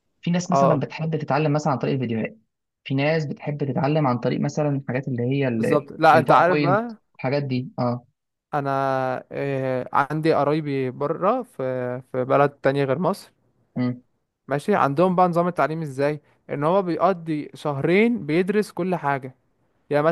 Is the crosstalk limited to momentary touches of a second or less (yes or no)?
no